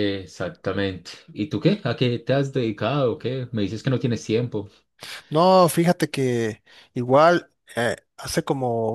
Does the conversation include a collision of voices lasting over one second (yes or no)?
no